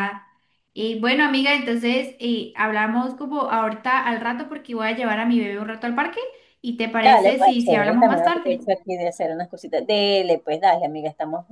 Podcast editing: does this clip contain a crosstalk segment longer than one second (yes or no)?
yes